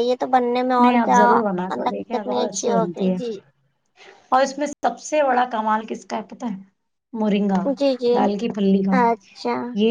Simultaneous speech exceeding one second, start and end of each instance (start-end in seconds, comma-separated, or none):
0.8-3.2